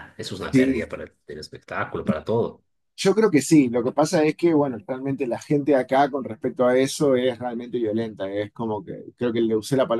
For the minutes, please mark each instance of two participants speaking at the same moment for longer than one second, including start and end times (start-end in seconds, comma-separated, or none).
none